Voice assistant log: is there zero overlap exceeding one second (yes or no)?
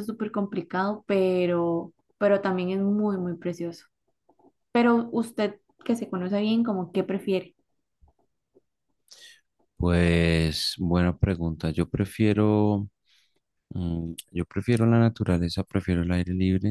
yes